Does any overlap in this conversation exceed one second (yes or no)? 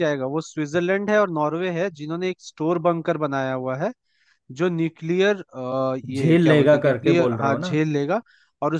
yes